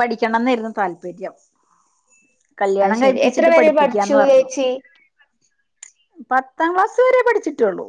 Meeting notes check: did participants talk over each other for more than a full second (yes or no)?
yes